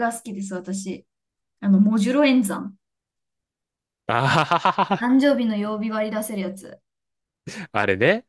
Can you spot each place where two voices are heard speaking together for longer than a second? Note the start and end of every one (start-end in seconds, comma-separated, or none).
none